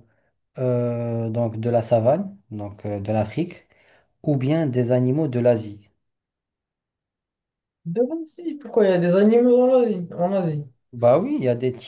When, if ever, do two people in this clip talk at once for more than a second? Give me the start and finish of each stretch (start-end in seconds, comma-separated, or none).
none